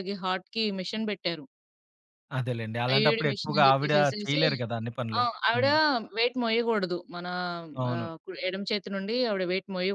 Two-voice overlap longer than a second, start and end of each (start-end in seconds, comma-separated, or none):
2.9-4.4